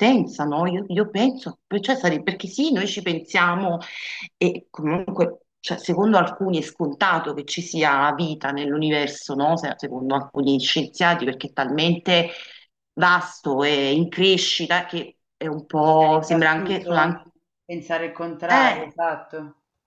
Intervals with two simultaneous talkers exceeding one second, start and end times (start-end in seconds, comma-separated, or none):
15.8-17.2